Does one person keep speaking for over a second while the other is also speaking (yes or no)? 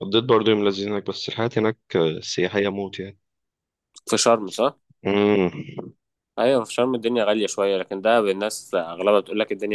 no